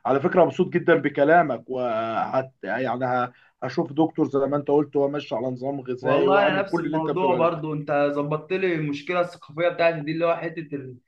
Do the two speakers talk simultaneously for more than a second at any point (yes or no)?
yes